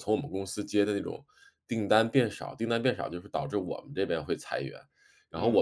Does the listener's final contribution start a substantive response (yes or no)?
no